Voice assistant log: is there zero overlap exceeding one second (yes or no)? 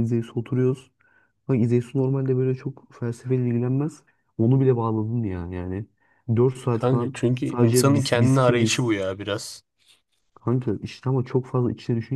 no